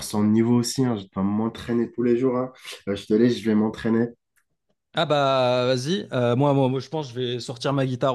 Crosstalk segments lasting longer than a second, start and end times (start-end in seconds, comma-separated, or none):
none